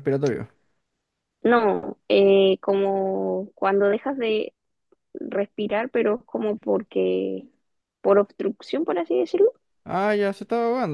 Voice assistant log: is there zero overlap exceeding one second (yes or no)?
yes